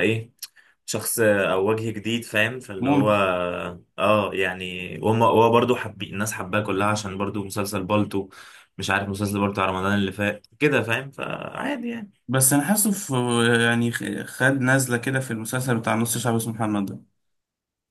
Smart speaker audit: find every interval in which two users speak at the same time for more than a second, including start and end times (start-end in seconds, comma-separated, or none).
none